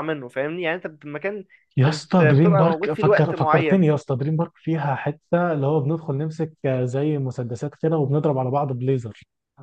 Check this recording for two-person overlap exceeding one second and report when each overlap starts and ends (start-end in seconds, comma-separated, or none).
1.9-3.9